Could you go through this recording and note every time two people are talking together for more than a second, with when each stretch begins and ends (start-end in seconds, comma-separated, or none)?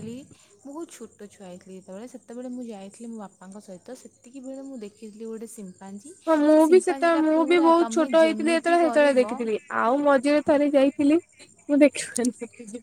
6.3-9.3